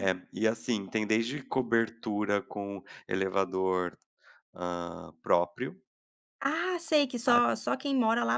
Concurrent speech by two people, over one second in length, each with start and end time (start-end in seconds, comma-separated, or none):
none